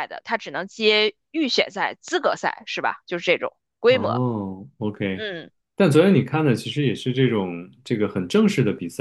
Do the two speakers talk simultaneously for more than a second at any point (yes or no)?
no